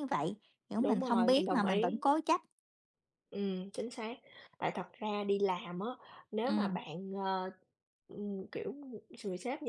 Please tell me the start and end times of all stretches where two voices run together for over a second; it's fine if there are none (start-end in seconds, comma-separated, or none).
0.8-2.0